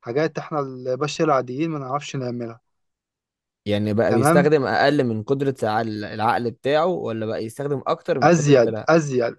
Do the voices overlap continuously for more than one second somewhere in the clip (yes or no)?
no